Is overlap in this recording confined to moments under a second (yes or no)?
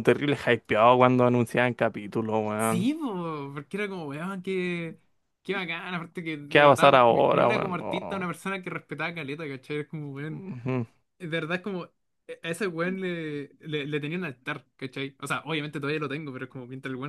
no